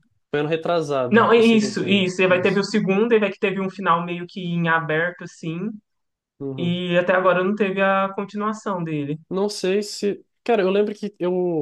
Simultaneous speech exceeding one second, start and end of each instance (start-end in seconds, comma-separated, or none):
1.1-2.6